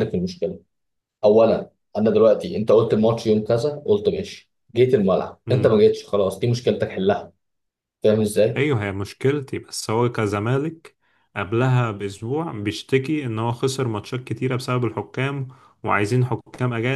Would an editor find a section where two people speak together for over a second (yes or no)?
no